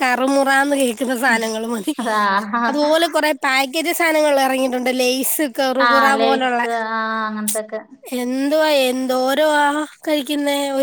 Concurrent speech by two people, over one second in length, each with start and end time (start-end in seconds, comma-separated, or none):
none